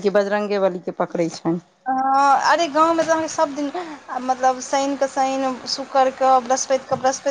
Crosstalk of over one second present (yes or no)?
no